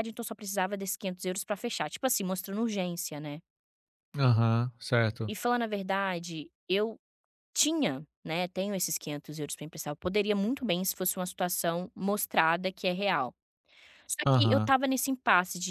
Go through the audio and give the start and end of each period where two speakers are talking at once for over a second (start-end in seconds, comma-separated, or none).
none